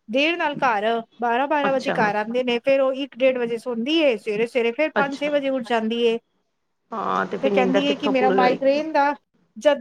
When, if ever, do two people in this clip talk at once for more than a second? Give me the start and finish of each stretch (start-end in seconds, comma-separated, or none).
7.4-8.8